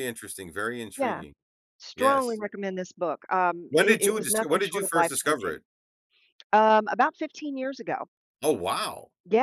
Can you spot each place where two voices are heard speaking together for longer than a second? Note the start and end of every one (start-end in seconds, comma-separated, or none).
3.7-5.6